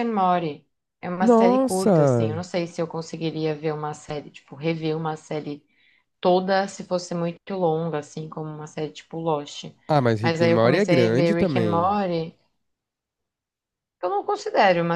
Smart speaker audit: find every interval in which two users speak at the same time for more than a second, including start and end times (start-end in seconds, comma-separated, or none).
1.2-2.4, 10.2-11.9